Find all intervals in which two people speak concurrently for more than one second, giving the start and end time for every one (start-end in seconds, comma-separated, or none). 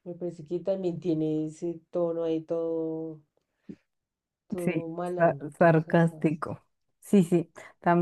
4.6-6.3